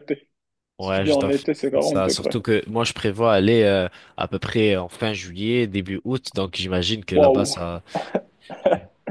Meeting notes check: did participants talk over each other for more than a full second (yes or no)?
yes